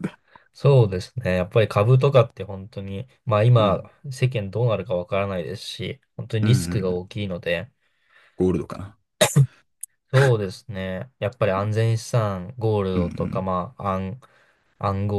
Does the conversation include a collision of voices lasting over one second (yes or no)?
no